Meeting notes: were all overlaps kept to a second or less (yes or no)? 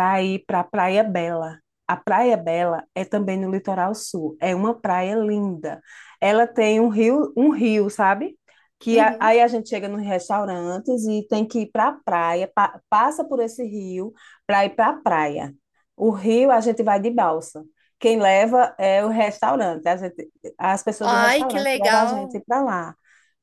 no